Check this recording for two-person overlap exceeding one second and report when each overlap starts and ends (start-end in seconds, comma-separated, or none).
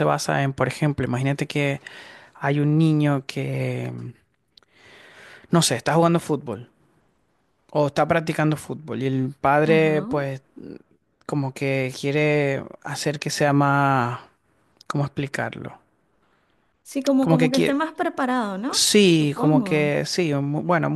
18.7-19.9